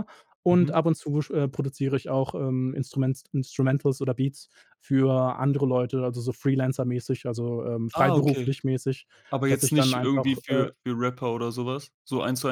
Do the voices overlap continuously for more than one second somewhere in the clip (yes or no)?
yes